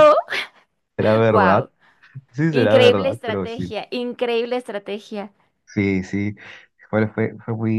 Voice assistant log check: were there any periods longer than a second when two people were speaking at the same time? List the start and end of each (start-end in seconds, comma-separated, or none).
2.5-3.7